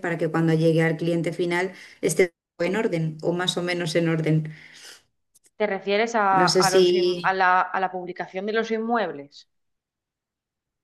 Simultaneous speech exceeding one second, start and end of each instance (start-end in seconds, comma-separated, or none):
none